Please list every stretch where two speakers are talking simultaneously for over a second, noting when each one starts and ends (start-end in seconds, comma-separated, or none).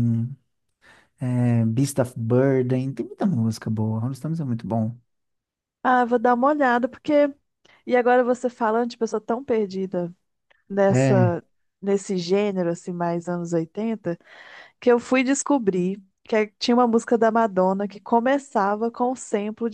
none